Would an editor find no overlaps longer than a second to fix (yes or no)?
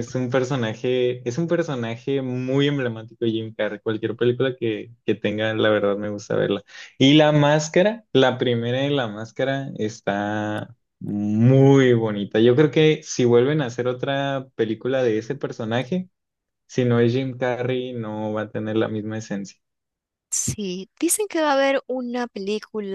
yes